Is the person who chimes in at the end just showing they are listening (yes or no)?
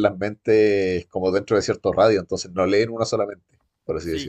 no